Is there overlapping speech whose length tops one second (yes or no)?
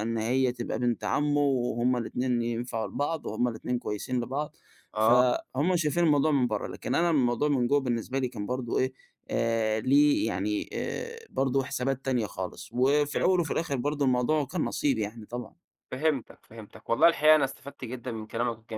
no